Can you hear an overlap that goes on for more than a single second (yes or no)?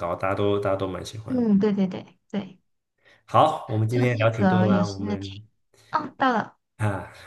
yes